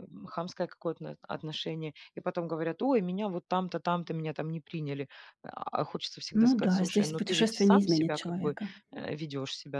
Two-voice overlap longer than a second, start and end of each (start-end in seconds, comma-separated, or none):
6.3-8.6